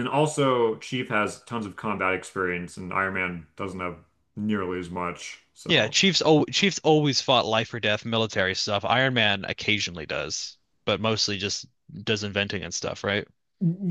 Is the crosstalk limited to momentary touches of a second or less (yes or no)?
yes